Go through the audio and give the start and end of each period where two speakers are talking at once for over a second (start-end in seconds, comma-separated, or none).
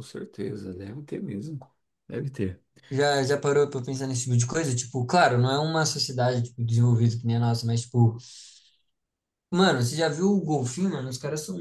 none